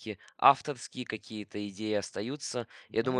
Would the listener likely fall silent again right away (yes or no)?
yes